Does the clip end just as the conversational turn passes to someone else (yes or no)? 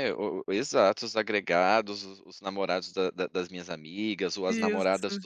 no